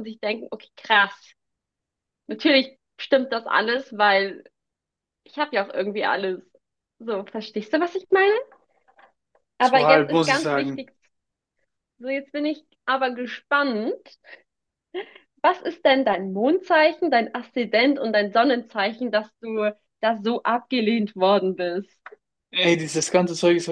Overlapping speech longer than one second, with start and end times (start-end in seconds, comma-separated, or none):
9.6-10.9